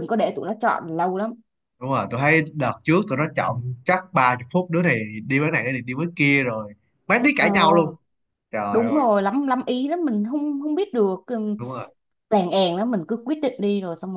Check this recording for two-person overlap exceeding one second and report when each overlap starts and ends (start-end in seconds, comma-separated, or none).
none